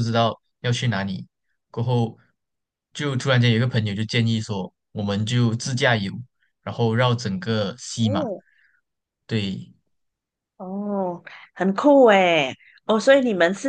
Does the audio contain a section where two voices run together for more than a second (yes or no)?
no